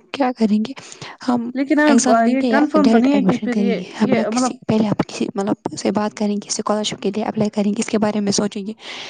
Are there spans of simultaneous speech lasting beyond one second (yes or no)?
yes